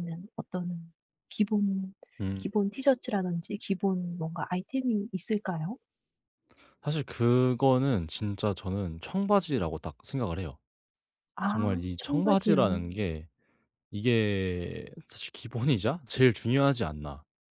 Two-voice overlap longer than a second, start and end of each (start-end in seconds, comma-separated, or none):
11.5-12.8